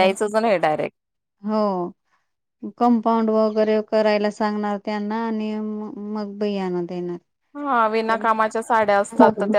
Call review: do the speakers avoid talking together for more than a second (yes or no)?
yes